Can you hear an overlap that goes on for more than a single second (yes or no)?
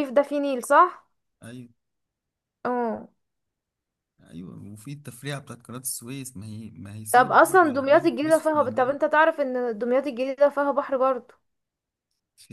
yes